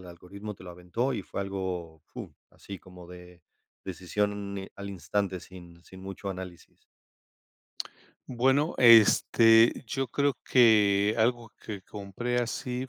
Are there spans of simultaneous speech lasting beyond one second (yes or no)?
no